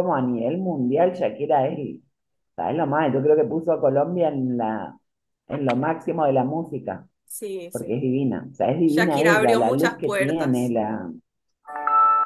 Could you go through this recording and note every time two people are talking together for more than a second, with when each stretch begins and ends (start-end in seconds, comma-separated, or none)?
8.8-10.7